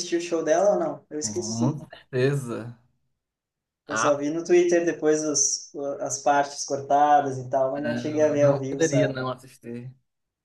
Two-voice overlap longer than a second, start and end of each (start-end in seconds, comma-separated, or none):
7.8-9.2